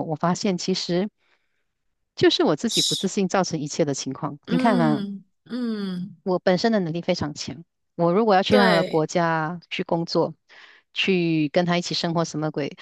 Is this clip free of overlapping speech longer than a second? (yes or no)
yes